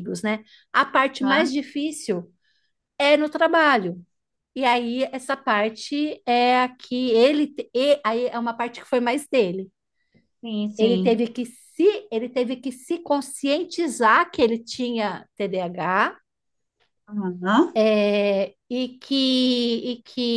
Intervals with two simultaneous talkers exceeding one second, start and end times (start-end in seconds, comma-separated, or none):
none